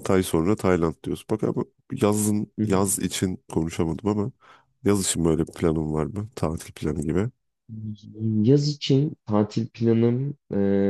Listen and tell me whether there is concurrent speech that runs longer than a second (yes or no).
no